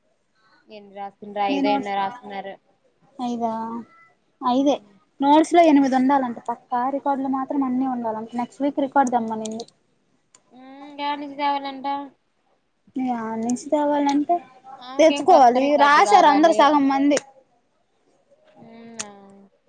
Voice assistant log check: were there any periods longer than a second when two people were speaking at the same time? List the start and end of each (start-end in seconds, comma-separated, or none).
15.0-16.6